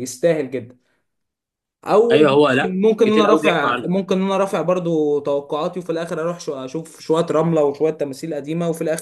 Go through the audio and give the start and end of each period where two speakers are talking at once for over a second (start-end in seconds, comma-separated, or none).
2.1-3.9